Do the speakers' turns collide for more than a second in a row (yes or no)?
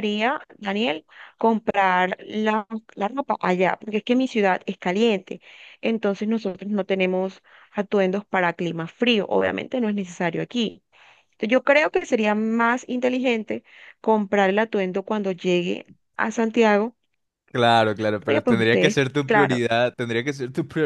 yes